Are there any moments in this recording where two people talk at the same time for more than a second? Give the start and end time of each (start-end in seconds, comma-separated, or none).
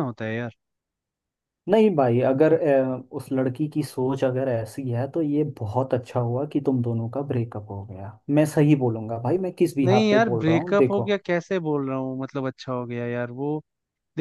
9.8-11.1